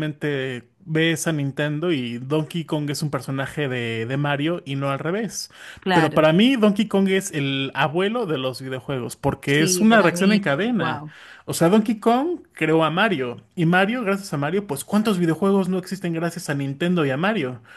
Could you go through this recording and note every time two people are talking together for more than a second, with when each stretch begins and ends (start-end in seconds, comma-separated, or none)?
9.4-11.1